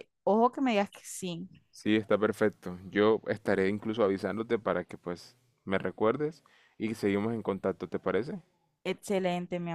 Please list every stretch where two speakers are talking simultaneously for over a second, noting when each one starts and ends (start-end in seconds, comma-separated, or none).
none